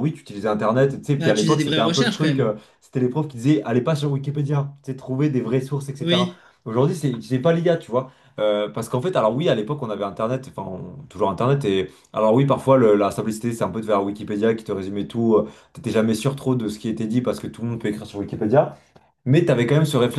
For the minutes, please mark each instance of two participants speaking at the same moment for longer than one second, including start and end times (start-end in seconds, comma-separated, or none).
1.2-2.5